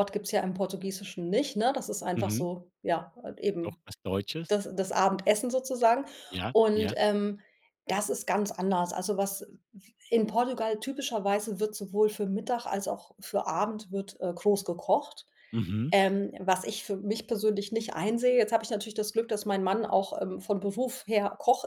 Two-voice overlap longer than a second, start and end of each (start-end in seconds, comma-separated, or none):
none